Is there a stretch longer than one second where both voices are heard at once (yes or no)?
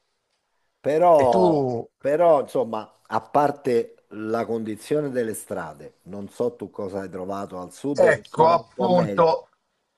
yes